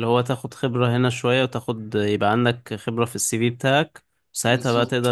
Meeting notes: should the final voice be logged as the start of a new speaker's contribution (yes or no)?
no